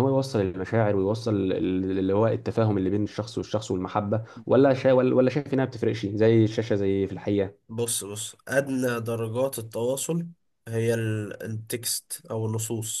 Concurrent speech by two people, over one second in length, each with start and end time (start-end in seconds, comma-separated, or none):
none